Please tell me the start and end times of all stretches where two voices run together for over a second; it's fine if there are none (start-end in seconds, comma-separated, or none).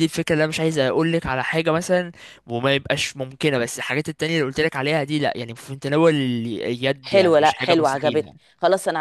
7.0-8.3